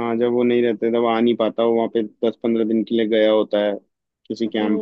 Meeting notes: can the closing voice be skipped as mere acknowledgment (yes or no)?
no